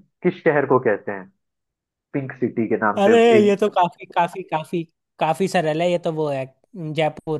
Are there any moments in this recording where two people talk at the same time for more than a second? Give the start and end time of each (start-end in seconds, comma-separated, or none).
none